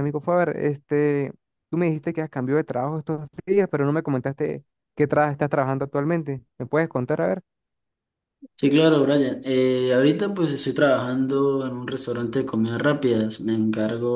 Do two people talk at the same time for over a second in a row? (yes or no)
no